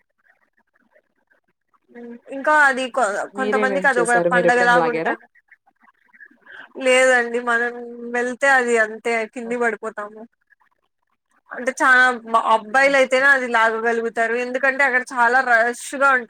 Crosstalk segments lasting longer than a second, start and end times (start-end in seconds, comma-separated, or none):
3.4-5.1